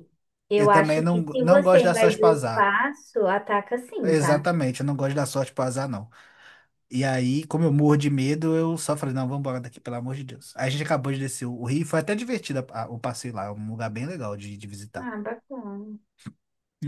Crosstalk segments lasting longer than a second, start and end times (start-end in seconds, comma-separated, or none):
0.6-2.7